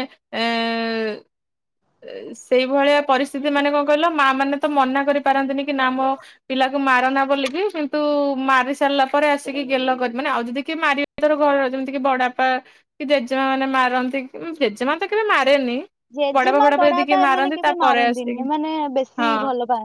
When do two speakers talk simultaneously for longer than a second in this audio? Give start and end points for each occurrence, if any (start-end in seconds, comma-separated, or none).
16.4-18.4